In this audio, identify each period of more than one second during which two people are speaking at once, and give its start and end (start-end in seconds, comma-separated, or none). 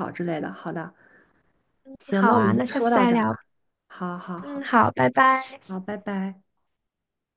2.1-3.4